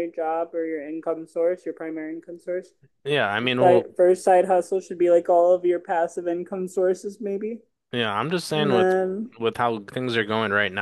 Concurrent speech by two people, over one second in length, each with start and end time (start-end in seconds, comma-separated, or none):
none